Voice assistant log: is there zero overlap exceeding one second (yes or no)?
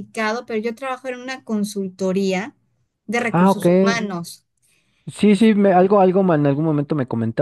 yes